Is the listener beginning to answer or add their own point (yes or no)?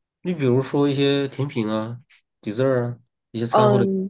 yes